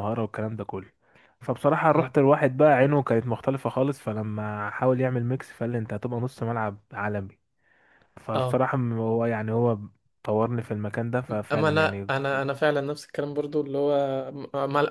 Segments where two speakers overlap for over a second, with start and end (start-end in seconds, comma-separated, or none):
none